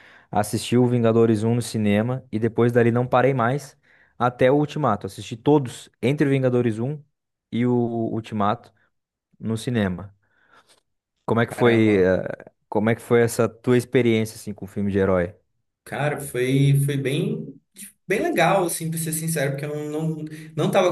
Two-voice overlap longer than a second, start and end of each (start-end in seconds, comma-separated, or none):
none